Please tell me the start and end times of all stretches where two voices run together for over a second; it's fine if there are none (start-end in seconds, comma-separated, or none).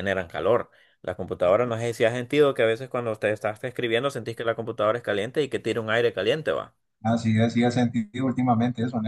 none